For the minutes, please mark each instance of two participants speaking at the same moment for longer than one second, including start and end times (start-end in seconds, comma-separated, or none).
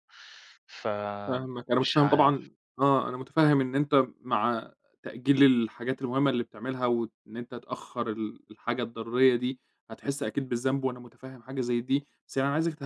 1.3-2.5